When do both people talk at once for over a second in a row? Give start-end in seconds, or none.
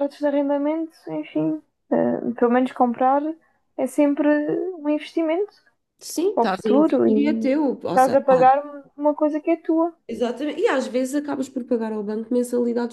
6.3-8.5